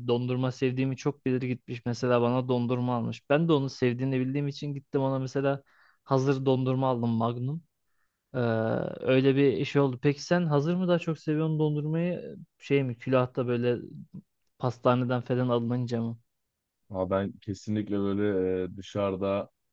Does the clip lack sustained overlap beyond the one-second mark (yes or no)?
yes